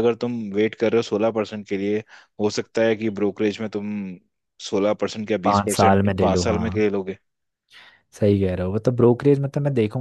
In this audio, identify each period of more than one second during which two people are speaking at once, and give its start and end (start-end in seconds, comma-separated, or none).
5.4-6.8